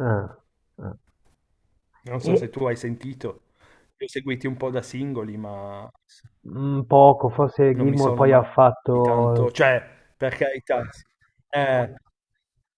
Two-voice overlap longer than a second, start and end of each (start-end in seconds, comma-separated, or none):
7.7-9.0